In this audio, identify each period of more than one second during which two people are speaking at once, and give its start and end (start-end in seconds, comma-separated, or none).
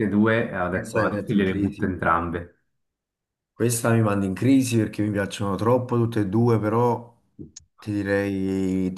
0.7-1.9